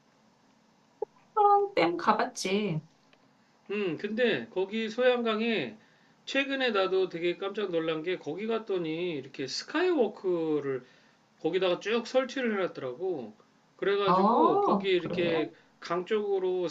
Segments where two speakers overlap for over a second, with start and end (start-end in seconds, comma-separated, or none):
14.0-15.5